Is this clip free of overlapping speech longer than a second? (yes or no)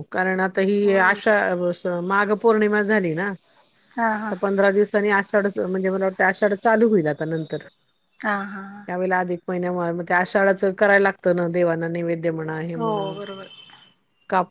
yes